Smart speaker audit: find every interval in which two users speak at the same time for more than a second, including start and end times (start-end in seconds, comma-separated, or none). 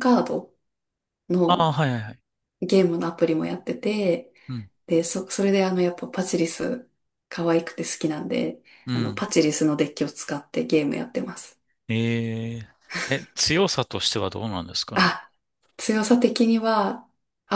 none